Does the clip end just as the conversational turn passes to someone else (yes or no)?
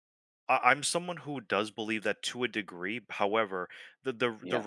no